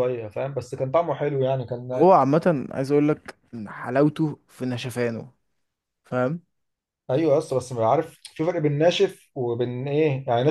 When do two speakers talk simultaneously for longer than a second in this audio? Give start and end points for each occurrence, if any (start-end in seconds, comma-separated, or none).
none